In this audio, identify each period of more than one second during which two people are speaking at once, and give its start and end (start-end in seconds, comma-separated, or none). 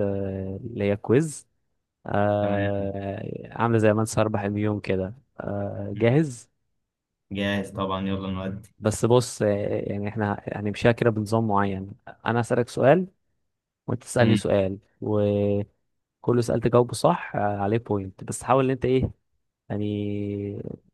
none